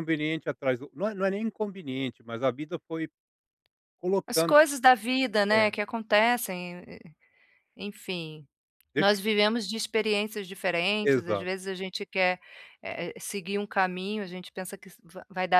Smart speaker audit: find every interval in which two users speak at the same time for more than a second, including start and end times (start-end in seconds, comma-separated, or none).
none